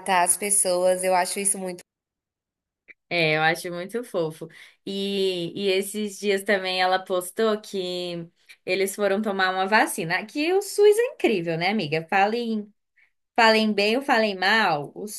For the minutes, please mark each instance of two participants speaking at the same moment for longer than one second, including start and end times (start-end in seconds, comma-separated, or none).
none